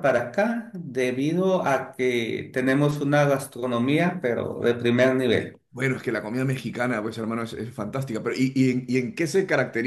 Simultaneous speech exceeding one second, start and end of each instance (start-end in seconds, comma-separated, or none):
none